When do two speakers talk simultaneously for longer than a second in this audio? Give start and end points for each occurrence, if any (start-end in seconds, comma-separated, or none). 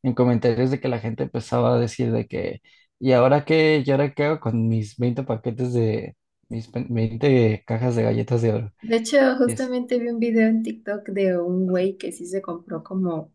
none